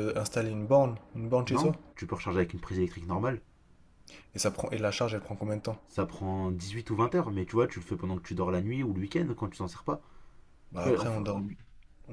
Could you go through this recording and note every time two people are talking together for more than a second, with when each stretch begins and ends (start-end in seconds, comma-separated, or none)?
none